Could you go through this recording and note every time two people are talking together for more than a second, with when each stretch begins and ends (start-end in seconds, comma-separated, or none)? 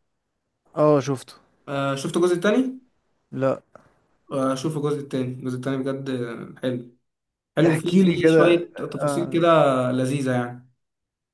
7.7-9.5